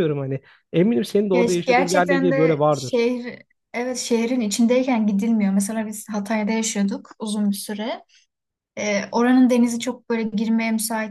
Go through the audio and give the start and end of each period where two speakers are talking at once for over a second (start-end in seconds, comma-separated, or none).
1.3-3.0